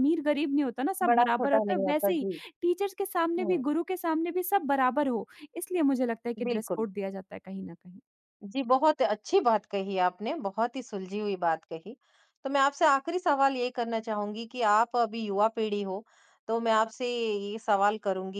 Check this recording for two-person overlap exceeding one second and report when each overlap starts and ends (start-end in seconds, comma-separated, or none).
1.0-2.3